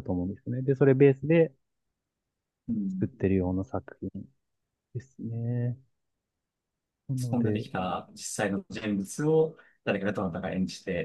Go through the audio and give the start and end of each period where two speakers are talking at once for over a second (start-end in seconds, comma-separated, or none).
none